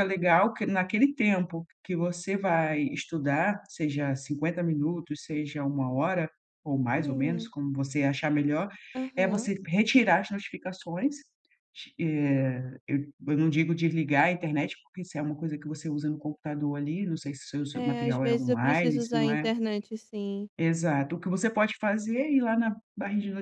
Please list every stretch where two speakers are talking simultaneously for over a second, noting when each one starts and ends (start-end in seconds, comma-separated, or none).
17.7-19.5